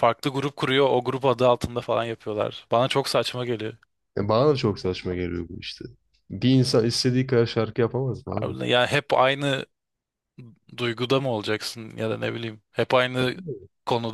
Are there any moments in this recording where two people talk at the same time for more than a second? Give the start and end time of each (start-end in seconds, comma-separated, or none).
none